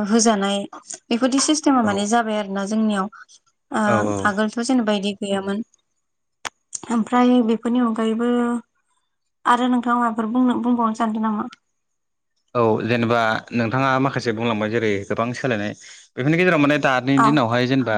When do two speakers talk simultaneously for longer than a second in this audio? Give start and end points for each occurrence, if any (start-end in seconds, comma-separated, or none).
none